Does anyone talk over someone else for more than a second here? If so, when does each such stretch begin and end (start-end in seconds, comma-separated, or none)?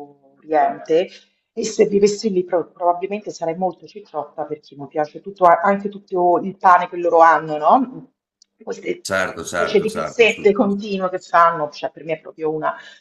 9.0-10.6